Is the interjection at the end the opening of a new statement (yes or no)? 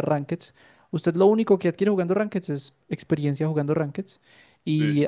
no